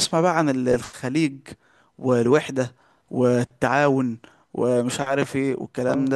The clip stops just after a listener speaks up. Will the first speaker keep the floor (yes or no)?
no